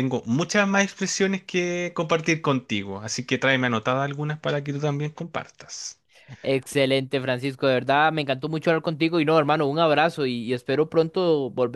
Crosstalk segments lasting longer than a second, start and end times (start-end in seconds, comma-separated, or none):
none